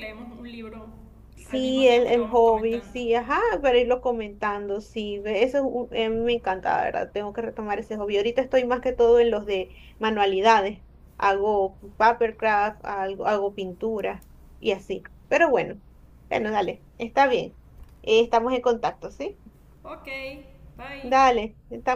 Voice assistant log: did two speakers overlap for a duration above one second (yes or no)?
yes